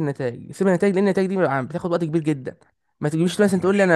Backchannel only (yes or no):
yes